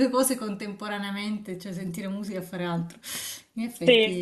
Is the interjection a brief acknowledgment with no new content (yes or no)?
no